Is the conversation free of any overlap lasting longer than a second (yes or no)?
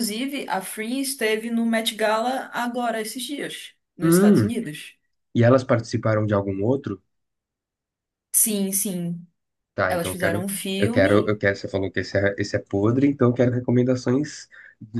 no